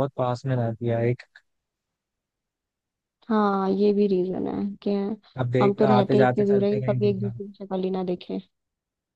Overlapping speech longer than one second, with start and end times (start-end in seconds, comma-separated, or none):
5.6-7.3